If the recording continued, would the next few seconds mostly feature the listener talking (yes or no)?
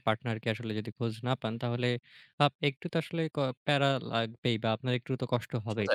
no